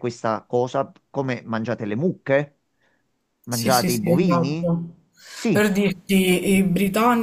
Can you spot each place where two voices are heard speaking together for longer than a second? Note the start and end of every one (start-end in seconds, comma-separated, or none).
3.5-4.7